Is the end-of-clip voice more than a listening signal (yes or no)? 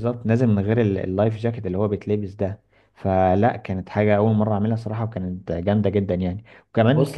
yes